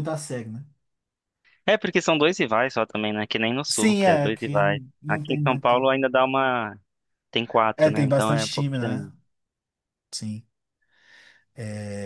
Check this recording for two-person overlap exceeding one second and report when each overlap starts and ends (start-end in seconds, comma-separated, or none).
3.7-5.9, 7.8-9.1